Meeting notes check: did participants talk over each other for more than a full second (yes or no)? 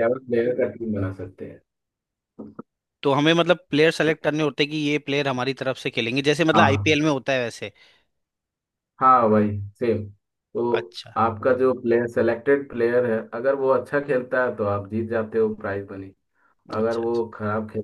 no